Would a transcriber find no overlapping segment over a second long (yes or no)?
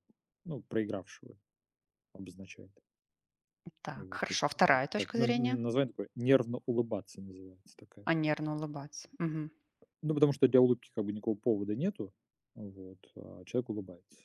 no